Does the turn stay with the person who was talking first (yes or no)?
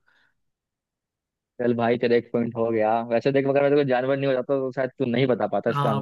no